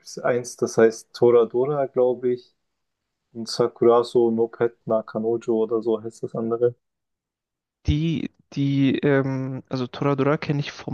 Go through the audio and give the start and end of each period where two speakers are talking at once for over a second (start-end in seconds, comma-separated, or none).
none